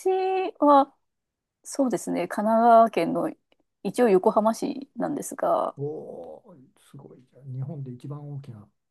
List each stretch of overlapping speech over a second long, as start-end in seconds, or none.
none